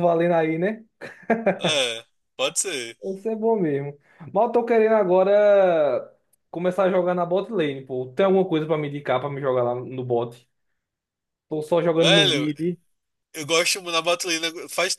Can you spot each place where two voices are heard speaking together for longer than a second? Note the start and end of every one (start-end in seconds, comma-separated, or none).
none